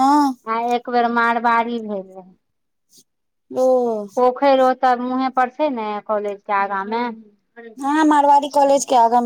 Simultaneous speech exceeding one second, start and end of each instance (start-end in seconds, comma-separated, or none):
none